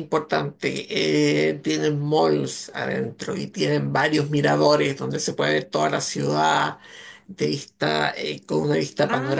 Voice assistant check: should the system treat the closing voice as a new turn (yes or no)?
yes